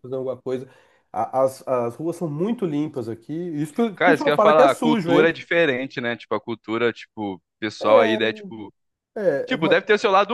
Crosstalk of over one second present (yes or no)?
yes